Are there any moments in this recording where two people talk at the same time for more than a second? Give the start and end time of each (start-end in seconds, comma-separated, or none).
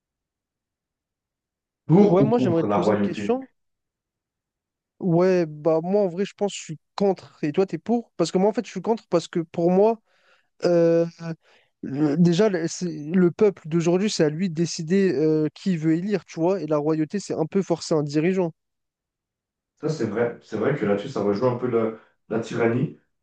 2.1-3.3